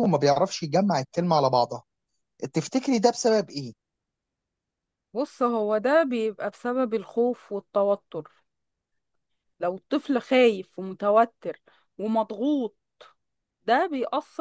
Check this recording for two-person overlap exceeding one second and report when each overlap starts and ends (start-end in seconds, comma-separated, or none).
none